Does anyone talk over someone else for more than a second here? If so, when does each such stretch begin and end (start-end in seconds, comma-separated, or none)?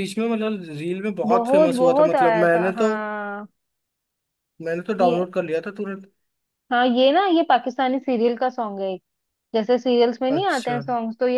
1.3-2.9